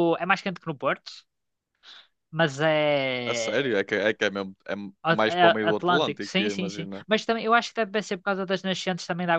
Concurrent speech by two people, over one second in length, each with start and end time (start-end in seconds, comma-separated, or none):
5.0-7.0